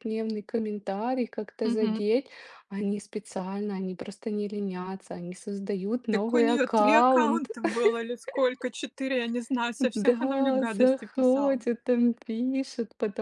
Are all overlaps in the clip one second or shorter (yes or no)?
no